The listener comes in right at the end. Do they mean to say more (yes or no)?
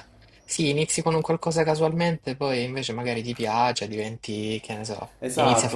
yes